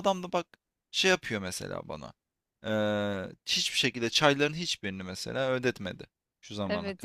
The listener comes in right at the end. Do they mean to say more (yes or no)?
yes